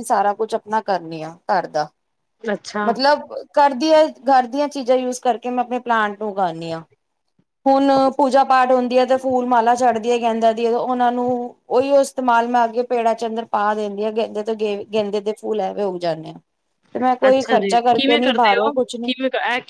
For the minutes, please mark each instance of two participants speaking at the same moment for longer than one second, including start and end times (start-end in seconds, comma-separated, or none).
17.3-19.1